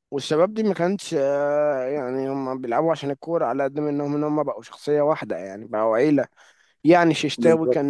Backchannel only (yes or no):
yes